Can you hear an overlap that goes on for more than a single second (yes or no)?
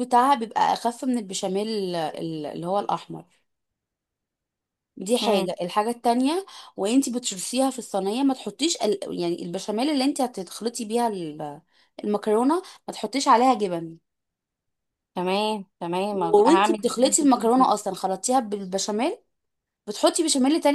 yes